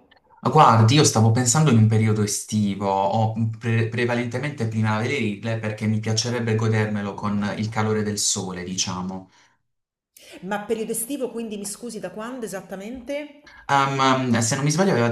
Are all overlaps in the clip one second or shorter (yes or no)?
yes